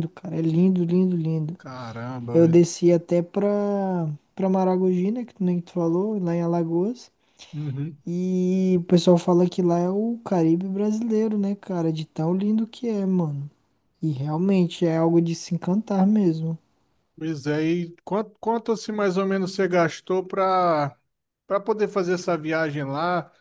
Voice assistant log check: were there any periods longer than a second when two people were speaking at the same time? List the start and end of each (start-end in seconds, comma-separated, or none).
none